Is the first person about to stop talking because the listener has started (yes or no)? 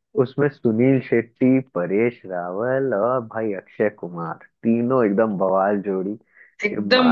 yes